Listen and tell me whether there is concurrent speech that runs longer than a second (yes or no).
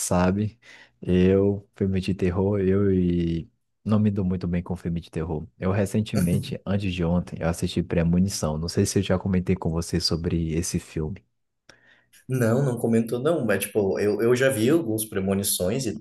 no